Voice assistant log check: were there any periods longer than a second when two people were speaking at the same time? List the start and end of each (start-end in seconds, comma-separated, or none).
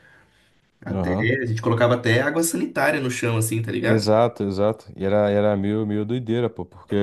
none